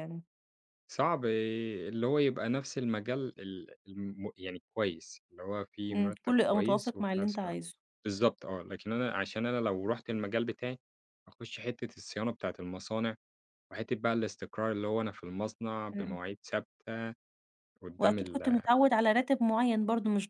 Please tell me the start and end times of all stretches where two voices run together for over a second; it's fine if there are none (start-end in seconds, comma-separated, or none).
5.9-7.6